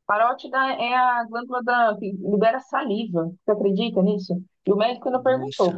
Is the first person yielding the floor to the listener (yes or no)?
no